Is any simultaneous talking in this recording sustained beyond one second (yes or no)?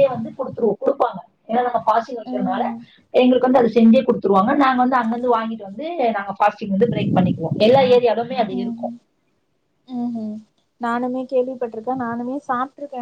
no